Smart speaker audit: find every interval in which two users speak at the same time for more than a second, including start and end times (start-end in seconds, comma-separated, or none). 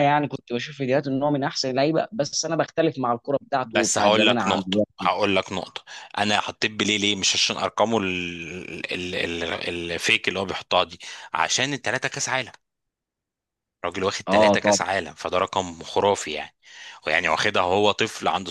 3.6-5.1